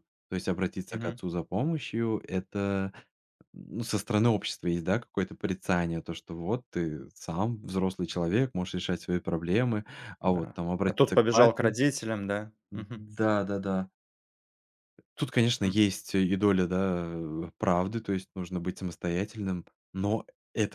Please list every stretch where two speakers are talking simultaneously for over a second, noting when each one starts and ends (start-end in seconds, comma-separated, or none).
10.2-11.8